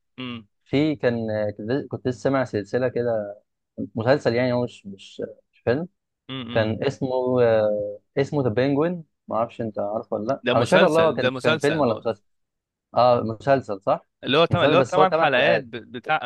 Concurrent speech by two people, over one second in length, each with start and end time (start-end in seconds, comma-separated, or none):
10.4-11.9, 14.5-15.7